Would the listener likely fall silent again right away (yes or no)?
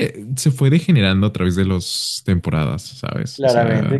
no